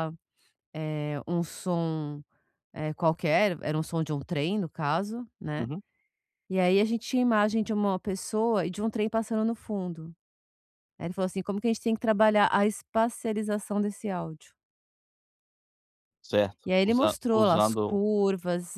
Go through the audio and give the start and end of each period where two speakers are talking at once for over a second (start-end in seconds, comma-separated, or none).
16.6-18.0